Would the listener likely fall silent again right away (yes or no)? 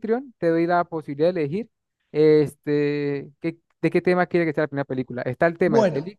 yes